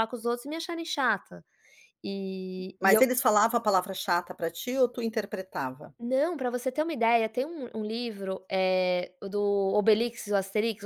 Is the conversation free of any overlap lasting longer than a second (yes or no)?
yes